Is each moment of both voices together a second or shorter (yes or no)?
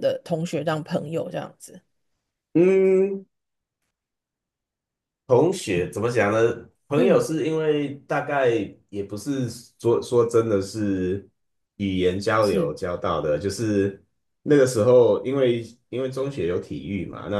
yes